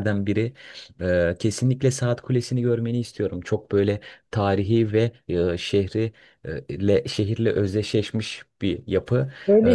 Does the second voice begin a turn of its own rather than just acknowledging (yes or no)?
yes